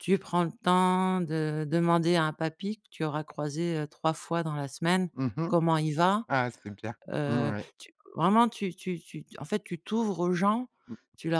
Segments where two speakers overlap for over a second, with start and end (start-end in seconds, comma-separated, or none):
none